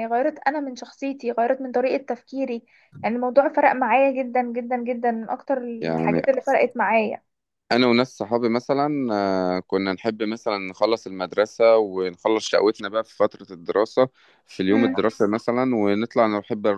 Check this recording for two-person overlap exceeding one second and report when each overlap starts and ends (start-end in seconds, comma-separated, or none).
none